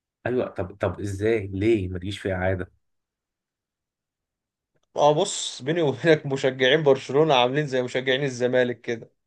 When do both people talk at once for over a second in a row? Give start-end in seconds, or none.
none